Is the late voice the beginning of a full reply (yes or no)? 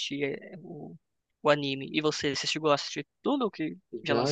yes